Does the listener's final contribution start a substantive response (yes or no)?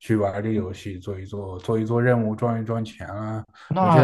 yes